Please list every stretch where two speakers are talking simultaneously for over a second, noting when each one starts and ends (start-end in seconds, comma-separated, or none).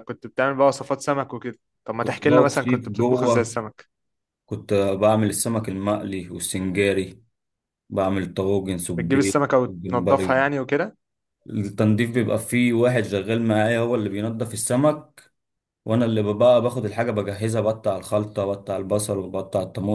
2.0-3.6, 9.0-10.3